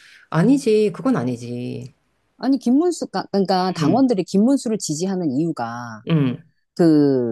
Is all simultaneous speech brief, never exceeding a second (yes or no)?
yes